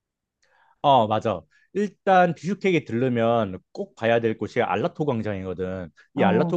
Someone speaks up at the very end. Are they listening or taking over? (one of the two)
listening